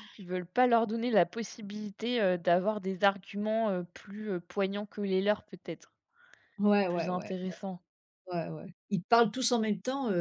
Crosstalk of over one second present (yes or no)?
no